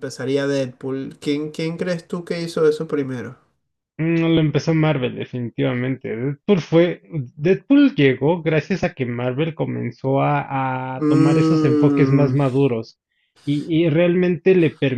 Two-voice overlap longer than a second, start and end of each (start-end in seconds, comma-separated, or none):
11.0-12.3